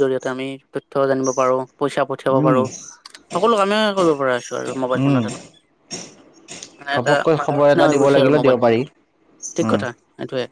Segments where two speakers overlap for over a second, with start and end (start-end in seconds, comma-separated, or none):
6.9-8.8